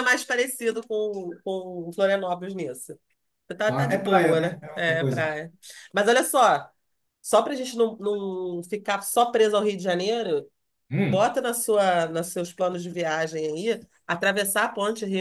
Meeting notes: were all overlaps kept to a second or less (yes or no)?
no